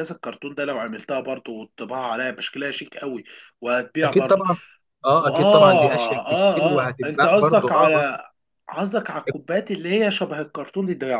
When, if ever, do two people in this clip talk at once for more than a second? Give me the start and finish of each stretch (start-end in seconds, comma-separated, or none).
5.2-8.0